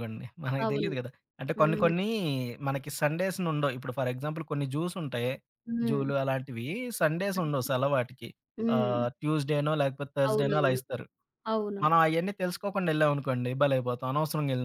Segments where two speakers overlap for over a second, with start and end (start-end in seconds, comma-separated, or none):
none